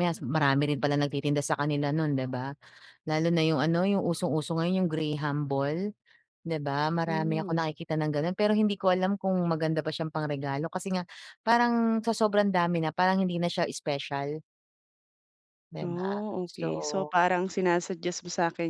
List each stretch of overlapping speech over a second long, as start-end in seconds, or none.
15.8-17.1